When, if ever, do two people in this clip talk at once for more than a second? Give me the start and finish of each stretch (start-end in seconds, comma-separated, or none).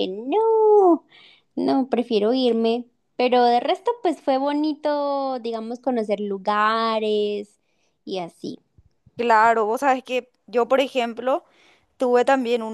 none